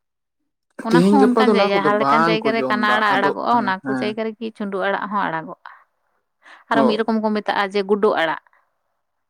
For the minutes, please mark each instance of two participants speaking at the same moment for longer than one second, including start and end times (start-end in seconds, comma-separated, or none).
0.9-4.1